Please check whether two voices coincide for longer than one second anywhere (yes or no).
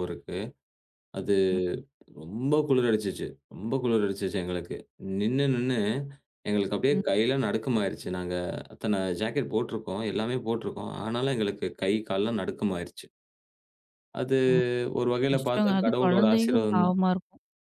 yes